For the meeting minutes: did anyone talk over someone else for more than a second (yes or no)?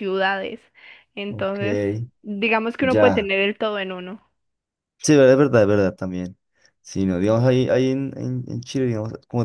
no